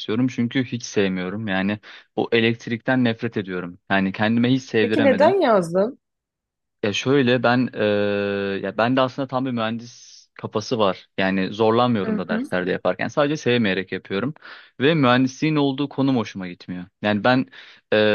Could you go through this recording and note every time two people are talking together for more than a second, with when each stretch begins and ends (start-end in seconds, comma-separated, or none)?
none